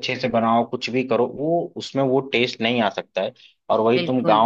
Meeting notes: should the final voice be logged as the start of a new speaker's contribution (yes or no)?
no